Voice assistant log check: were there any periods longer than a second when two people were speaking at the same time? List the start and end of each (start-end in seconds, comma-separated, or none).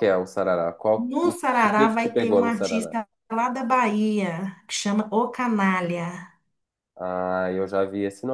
1.1-3.0